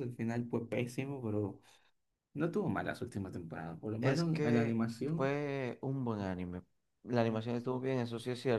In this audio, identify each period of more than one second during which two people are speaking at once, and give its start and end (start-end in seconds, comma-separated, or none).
4.0-5.3